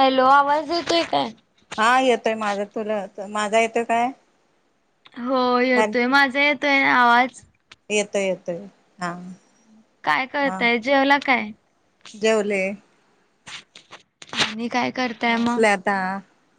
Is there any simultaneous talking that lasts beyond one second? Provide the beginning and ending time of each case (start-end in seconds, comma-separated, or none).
none